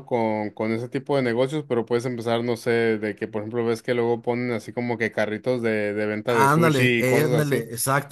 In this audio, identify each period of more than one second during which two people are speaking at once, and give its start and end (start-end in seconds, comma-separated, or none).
6.3-7.6